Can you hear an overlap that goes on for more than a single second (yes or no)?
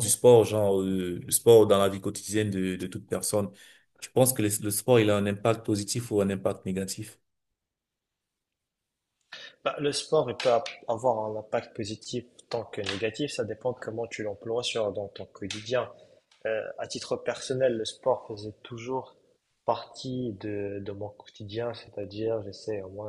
no